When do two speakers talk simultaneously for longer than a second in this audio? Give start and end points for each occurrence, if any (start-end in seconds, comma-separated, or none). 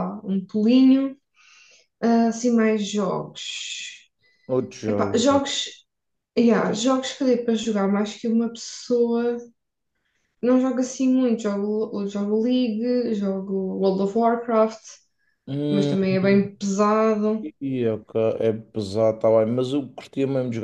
none